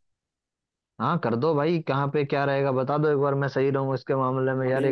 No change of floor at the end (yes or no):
no